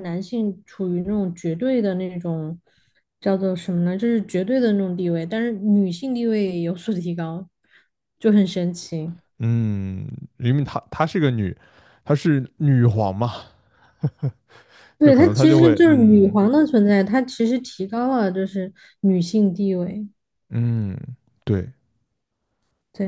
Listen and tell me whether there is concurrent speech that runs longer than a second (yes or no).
yes